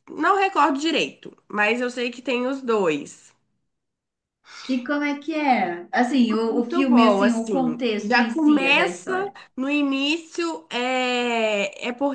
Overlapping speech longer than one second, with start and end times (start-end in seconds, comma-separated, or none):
6.5-9.1